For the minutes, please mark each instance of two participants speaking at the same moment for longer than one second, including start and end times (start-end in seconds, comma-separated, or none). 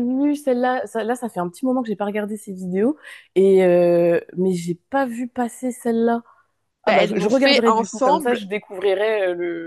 6.9-8.4